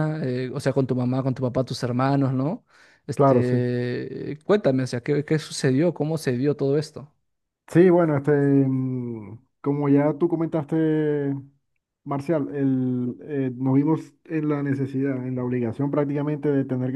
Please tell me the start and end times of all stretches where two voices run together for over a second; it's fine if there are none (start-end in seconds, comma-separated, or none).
none